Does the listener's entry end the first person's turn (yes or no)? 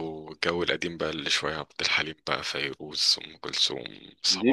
yes